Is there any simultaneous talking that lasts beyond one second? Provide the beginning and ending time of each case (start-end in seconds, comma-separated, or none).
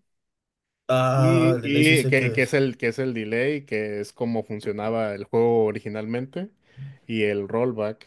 1.1-2.5